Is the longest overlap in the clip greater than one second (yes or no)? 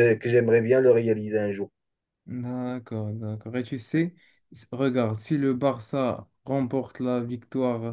no